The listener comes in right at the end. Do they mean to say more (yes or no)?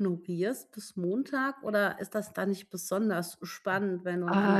yes